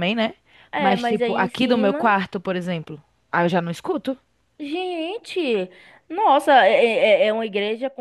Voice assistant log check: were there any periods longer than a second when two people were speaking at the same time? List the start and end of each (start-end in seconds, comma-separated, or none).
0.8-2.1